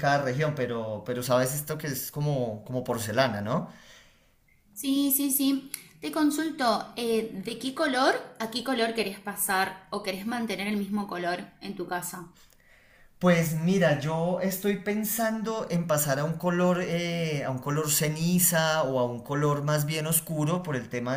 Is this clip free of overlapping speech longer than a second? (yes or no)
yes